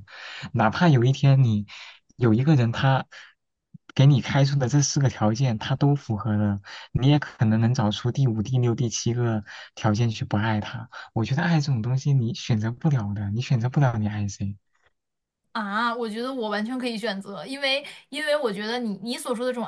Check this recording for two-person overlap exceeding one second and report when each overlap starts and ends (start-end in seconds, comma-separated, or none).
none